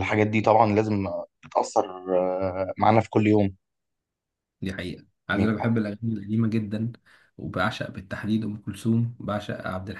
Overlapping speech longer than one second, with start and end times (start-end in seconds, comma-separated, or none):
none